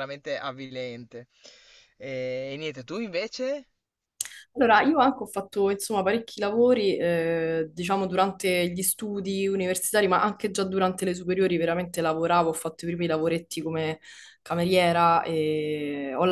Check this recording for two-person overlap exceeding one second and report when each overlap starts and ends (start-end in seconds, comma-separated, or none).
none